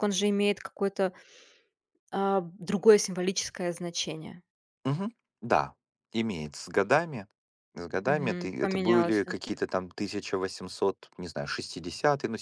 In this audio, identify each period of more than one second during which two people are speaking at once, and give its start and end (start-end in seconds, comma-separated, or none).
8.1-9.3